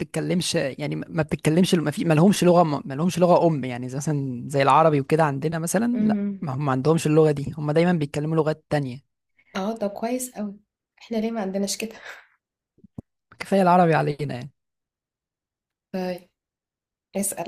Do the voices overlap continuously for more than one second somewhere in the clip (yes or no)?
no